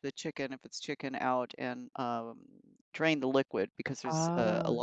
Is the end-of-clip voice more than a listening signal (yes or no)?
no